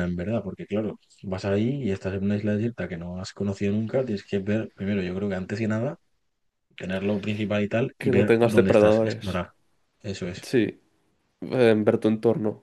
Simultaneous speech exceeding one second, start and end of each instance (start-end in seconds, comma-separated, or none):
8.0-9.2